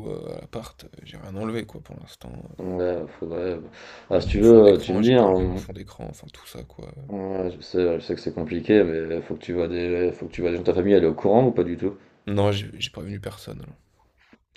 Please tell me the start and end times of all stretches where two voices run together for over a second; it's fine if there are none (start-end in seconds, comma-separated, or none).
4.1-5.7